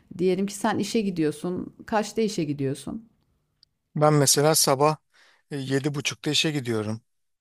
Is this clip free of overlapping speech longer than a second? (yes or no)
yes